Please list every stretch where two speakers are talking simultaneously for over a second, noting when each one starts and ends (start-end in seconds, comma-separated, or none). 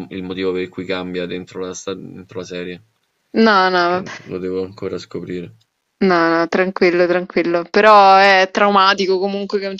none